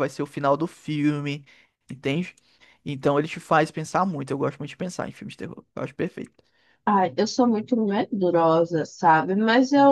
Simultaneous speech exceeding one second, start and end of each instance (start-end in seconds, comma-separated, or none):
none